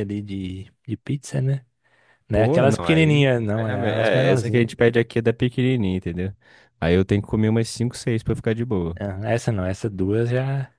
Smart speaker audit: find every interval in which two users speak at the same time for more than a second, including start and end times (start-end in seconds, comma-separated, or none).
2.3-4.7